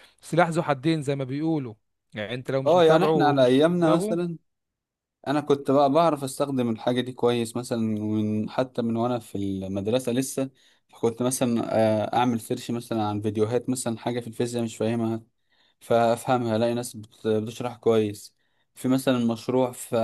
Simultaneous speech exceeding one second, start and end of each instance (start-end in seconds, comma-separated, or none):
2.7-4.2